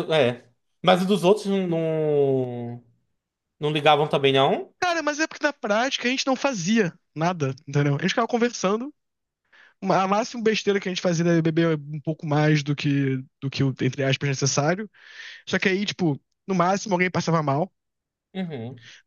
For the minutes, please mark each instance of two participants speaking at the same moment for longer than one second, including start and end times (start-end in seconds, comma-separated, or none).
none